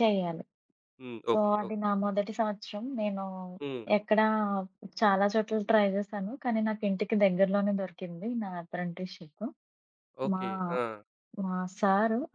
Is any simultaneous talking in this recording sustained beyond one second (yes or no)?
no